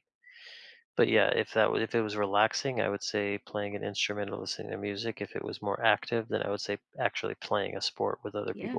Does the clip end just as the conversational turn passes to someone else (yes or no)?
yes